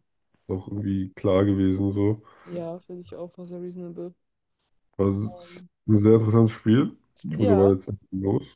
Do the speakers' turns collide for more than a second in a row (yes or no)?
no